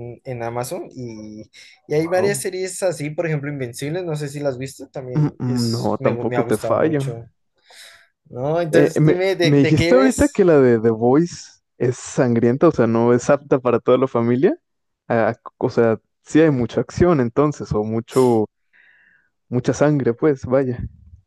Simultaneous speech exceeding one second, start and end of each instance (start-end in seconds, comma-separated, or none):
5.2-7.0, 8.7-10.4